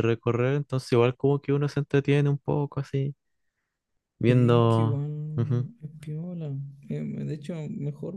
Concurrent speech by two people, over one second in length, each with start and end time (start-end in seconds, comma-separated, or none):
4.3-5.7